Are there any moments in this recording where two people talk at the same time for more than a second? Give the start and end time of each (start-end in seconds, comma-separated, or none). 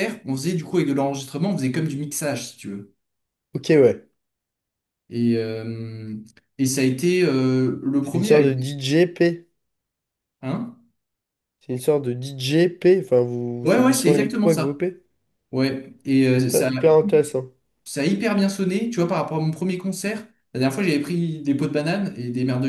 13.6-14.8